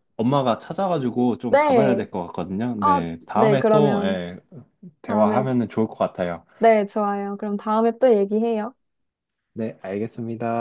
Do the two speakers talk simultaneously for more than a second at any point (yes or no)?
yes